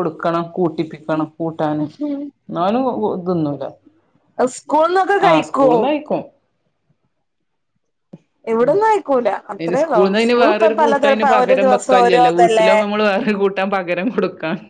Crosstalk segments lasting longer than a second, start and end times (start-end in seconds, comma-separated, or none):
9.6-11.7